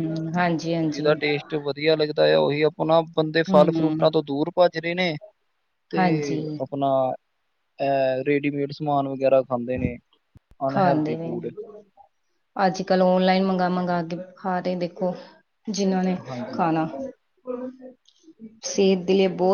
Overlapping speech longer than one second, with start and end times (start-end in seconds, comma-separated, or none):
none